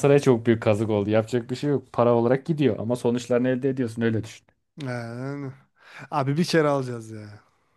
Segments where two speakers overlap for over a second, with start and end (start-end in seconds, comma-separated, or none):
none